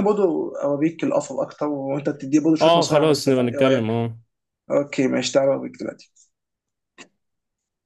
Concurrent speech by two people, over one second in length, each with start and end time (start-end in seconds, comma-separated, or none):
2.6-3.9